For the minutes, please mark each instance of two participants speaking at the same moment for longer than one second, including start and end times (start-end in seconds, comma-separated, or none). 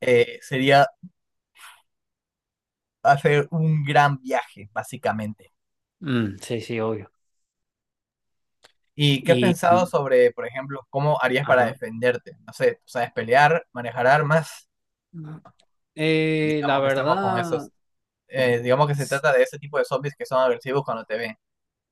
16.4-17.7